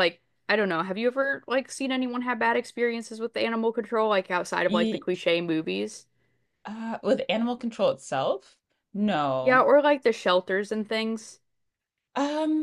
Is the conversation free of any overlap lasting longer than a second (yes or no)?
yes